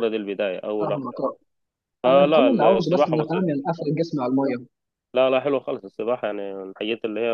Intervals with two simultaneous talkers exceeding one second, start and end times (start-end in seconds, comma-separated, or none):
2.1-3.5